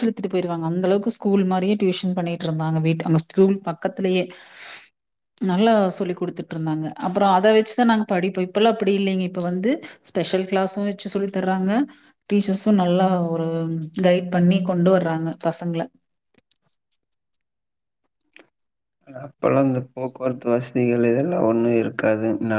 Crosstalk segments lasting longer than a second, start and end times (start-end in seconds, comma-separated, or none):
none